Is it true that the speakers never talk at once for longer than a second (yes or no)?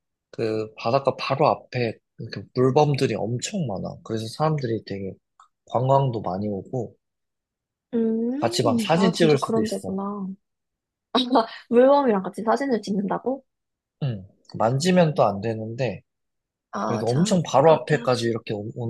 no